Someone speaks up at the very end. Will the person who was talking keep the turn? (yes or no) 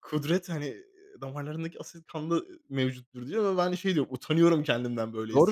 no